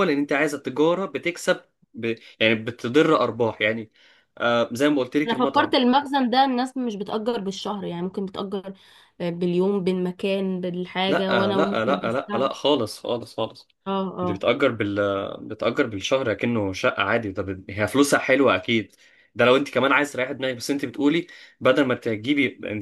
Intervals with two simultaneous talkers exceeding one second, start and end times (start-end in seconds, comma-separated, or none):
11.1-12.5